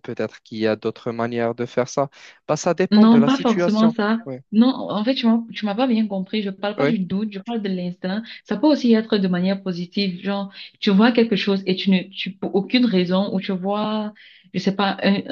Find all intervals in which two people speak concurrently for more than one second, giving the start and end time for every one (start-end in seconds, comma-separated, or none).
2.9-4.3